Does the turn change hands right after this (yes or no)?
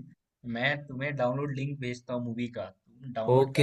yes